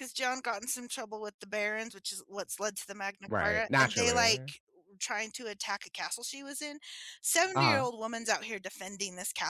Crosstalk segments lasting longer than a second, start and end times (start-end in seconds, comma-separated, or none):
3.3-4.5